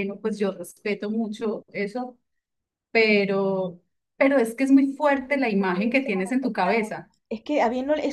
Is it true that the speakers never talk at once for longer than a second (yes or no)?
no